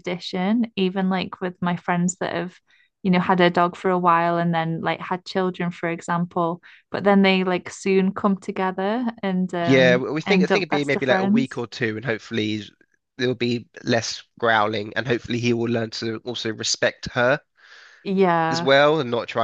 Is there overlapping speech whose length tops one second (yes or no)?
yes